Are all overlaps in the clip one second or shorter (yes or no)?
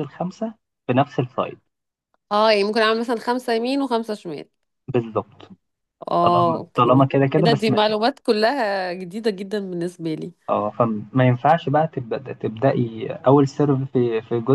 no